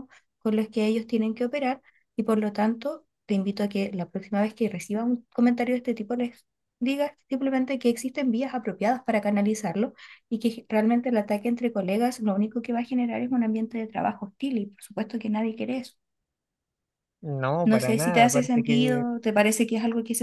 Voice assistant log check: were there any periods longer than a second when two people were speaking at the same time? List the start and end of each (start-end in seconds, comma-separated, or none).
17.6-19.0